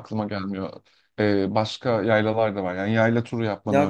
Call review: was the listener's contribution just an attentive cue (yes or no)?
no